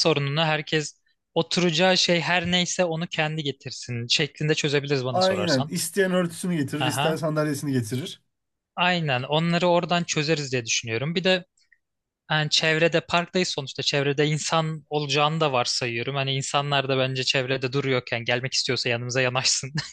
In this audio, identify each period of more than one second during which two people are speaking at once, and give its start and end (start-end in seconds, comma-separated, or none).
none